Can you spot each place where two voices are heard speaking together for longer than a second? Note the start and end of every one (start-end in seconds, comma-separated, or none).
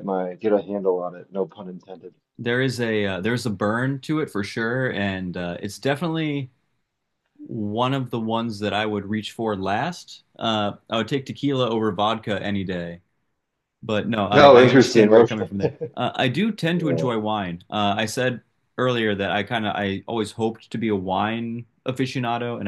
14.3-15.5